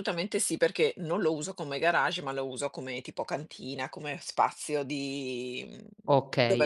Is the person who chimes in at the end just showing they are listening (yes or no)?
no